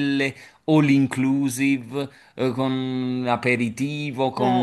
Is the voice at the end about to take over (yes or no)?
no